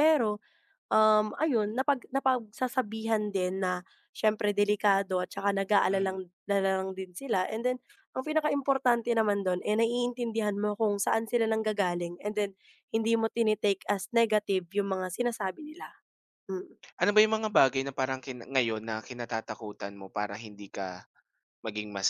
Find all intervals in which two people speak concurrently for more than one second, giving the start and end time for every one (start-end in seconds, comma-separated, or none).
none